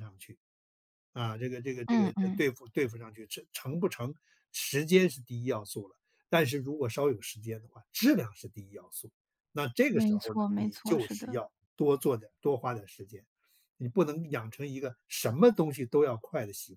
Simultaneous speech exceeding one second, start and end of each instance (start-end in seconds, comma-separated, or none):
9.9-11.4